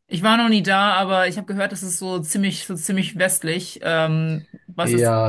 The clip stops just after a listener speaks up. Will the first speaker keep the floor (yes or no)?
no